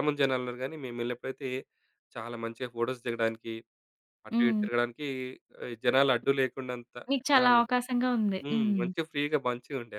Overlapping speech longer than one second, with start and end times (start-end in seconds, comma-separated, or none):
none